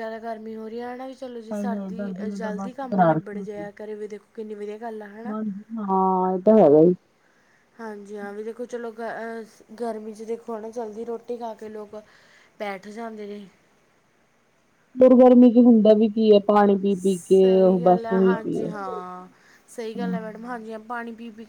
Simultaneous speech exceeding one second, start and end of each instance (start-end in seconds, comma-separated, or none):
1.4-3.4, 17.2-18.7